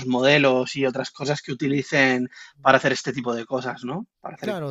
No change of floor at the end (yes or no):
no